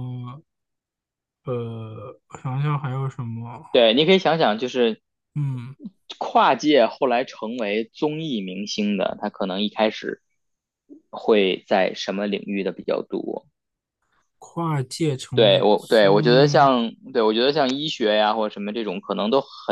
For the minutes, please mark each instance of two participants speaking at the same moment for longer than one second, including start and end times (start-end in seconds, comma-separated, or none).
15.3-16.7